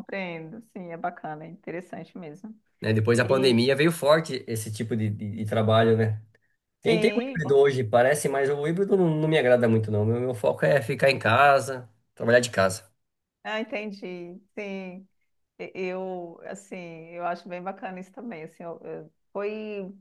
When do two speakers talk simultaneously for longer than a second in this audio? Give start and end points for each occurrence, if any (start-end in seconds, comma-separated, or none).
none